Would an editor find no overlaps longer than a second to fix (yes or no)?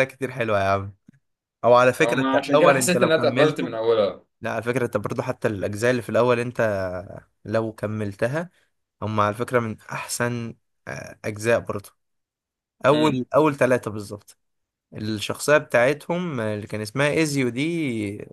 no